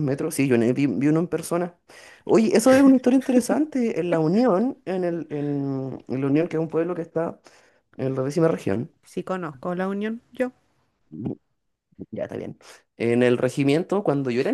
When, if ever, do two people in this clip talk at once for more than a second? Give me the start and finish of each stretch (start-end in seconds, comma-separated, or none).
none